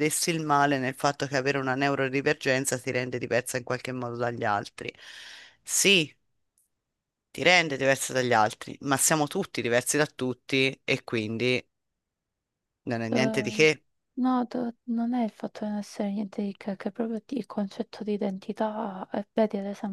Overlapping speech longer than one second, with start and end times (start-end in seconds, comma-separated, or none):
none